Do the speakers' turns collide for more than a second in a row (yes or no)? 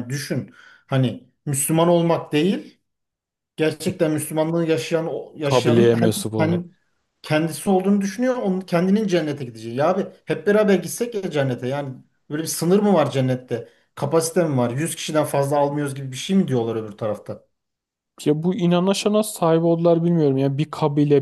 yes